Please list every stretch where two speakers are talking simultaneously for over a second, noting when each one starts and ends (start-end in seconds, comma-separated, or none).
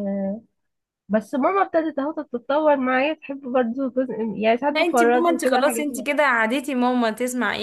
4.8-6.1